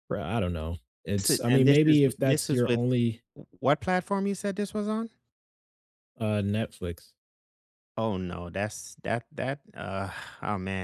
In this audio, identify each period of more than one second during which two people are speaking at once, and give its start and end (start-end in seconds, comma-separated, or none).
1.2-2.8